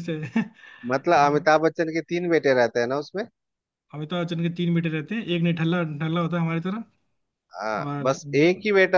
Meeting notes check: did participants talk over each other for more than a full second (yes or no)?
no